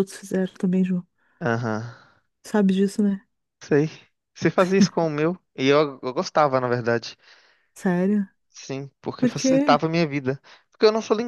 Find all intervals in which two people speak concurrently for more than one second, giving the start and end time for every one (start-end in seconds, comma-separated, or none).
none